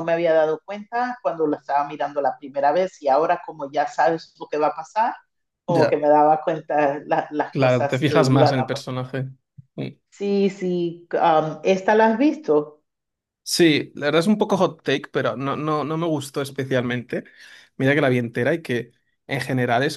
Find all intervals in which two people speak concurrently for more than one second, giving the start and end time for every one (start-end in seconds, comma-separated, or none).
7.5-8.8